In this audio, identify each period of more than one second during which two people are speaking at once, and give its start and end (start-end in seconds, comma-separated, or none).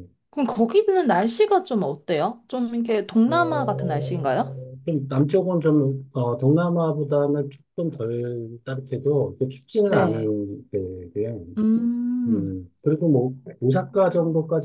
3.3-4.5